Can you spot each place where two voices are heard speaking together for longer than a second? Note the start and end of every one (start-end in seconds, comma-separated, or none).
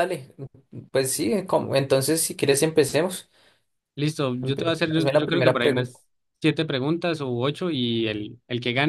4.4-6.0